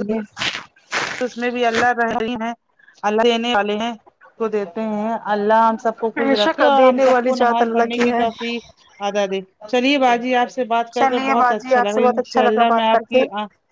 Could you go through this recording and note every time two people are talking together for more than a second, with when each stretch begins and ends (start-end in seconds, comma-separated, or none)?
6.2-8.2, 11.0-13.2